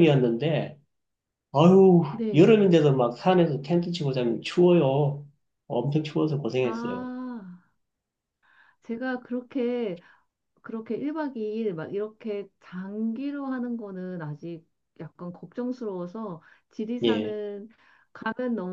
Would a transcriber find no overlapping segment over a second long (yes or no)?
yes